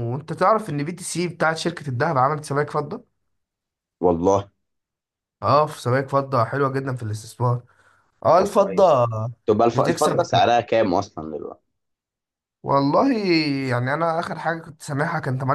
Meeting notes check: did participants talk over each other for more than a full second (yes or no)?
no